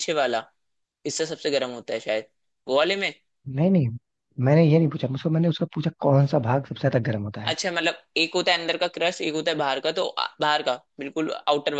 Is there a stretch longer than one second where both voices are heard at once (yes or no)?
no